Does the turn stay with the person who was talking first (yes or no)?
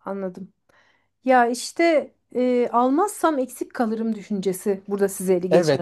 no